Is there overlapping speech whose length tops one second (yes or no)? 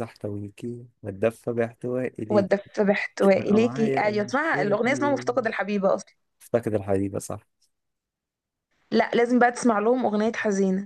yes